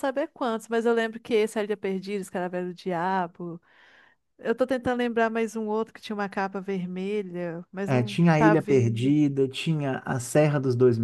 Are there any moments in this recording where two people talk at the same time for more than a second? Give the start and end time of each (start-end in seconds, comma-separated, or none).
7.8-9.1